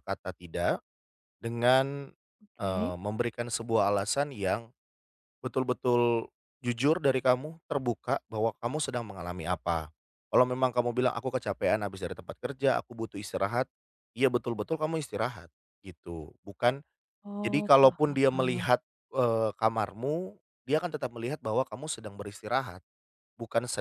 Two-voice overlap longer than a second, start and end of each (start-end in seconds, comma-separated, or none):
17.4-18.7